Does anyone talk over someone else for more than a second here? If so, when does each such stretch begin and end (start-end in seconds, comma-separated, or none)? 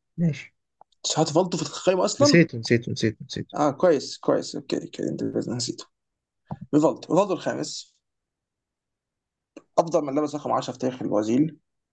none